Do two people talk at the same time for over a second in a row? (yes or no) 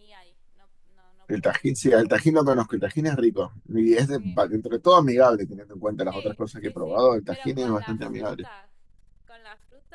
yes